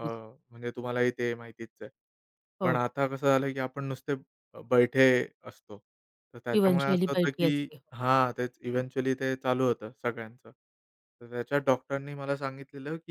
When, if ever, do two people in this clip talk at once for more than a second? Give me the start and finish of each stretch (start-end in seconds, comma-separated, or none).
6.5-7.8